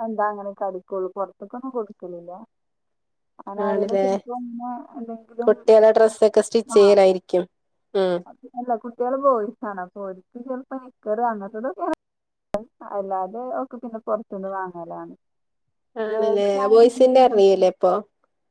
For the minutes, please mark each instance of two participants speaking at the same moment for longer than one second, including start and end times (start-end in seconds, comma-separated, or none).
16.1-17.5